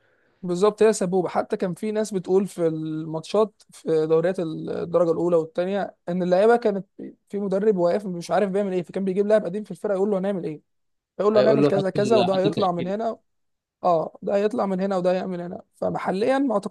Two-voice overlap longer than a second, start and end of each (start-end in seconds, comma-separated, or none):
11.3-12.9